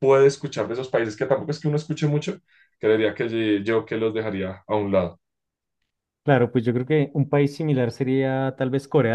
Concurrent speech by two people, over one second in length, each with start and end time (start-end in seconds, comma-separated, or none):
none